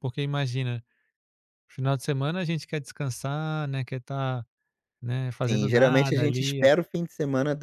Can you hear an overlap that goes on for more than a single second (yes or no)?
yes